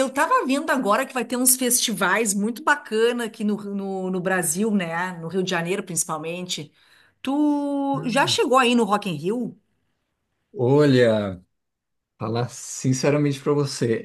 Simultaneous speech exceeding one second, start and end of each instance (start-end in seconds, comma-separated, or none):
none